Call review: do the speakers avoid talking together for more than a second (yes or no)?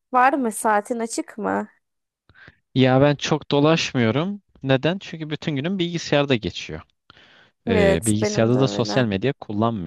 no